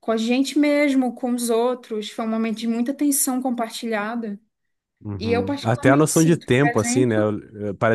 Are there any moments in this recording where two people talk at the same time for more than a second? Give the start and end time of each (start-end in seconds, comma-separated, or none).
5.2-7.4